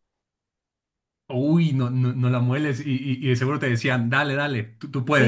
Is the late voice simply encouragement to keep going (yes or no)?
no